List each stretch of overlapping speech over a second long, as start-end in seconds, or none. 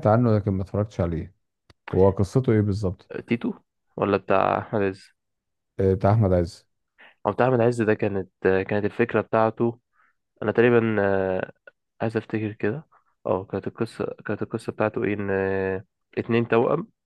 none